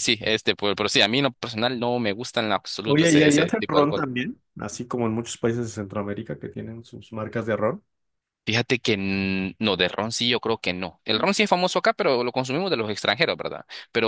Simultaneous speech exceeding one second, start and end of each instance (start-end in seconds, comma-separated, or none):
2.8-4.1